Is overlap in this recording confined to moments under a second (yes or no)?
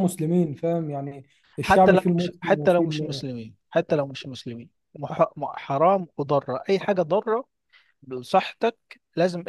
no